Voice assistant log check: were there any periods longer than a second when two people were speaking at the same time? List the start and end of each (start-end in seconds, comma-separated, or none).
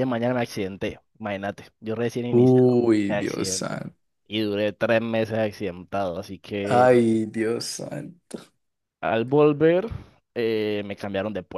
2.3-3.8